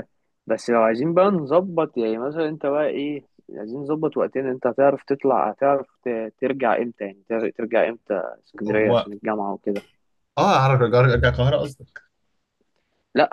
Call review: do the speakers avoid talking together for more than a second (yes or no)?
yes